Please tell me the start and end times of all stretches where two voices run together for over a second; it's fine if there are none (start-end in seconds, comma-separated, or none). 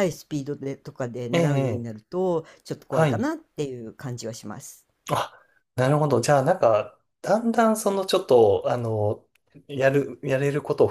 none